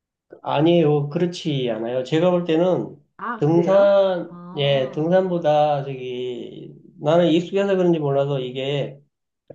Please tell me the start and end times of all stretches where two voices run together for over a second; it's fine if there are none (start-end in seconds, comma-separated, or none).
3.4-5.1